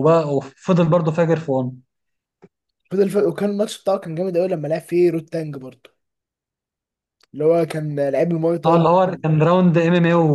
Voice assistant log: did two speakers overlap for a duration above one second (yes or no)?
no